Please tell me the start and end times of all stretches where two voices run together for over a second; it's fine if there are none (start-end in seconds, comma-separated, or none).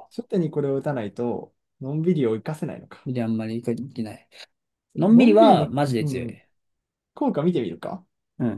5.0-6.3